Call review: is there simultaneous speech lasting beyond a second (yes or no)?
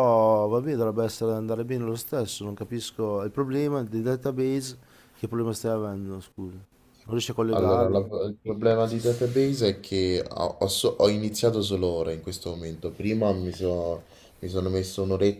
no